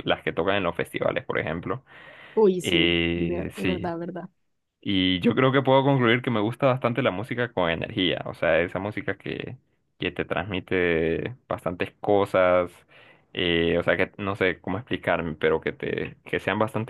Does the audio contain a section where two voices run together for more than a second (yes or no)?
yes